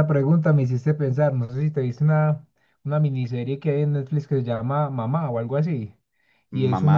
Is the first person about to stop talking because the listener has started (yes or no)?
no